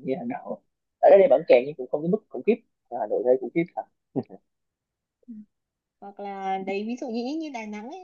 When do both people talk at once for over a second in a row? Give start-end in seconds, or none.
none